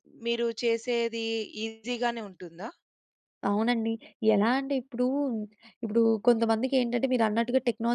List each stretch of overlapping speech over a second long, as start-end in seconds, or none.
none